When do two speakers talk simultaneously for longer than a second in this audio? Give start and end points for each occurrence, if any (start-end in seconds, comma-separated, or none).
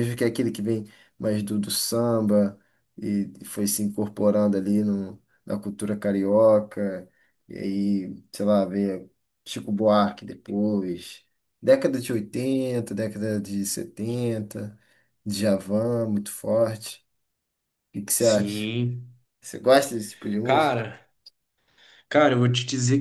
none